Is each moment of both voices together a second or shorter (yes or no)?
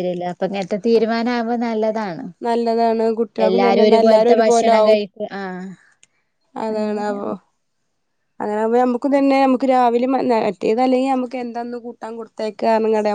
no